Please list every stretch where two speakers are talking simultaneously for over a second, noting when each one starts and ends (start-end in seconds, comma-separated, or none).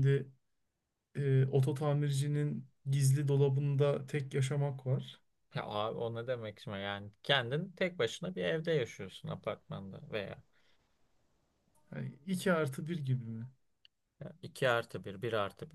none